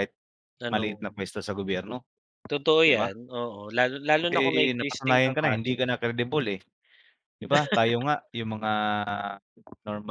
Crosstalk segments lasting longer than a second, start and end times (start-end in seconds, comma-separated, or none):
4.3-5.7